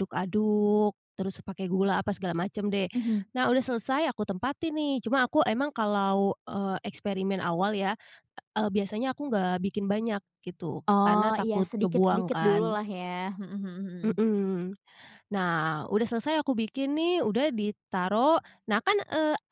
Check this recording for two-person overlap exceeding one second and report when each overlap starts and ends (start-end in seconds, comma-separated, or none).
10.9-12.8